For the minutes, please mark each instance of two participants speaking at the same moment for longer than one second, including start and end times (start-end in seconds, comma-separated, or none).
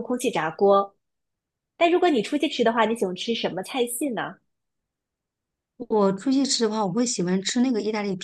none